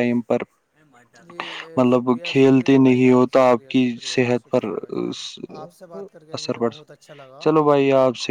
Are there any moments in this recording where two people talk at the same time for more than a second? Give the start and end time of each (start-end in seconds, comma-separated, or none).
1.9-4.6